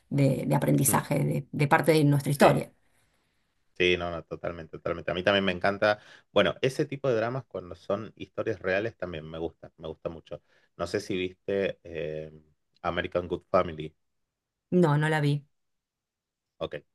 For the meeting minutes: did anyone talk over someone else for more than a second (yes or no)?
no